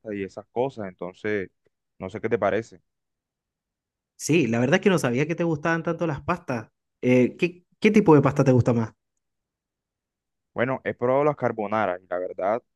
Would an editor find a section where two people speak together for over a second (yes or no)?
no